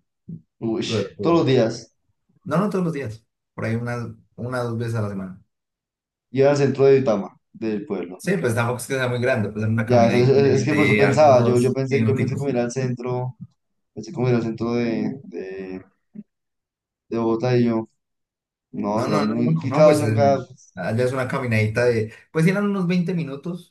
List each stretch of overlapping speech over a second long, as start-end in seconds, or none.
9.8-12.5, 18.9-20.2